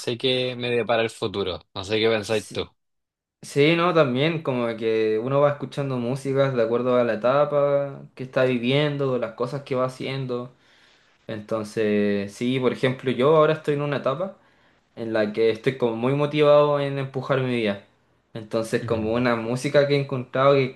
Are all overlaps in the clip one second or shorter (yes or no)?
yes